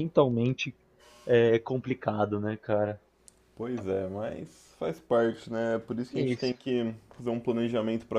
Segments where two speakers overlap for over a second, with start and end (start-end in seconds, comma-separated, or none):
none